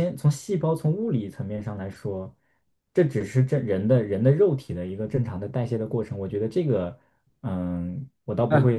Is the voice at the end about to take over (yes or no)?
yes